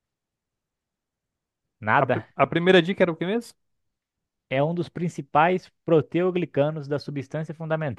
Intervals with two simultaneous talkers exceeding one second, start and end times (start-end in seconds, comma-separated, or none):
none